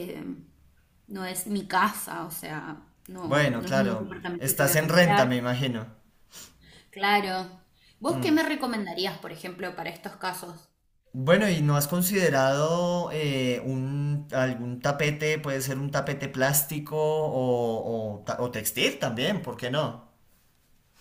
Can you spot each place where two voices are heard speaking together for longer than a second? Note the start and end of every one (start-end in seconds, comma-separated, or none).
3.2-5.3